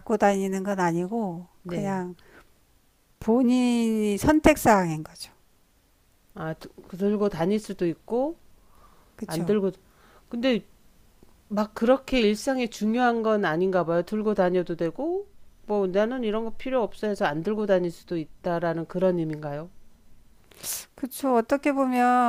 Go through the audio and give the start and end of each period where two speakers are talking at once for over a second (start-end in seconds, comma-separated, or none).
none